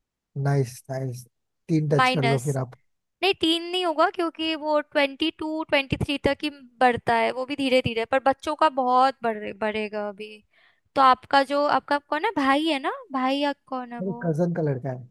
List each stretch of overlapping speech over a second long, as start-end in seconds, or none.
none